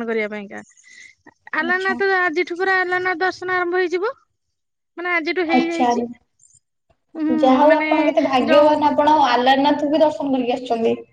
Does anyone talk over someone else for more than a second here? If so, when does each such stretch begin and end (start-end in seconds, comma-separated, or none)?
none